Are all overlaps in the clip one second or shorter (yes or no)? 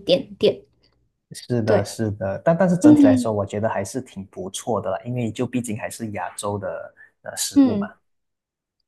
yes